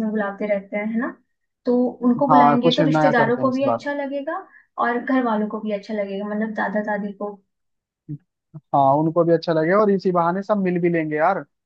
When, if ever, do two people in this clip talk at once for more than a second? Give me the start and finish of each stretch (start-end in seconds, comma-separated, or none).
2.3-3.9